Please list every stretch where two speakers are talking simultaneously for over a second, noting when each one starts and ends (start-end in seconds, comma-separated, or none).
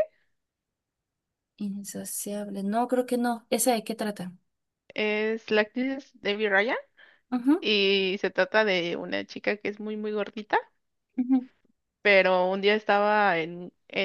none